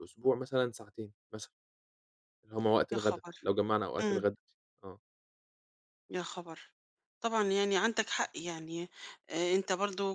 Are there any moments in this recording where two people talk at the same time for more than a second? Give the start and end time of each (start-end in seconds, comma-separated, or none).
none